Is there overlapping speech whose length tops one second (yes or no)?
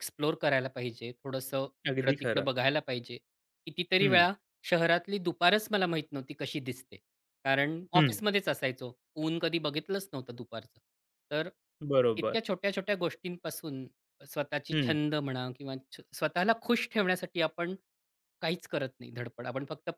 no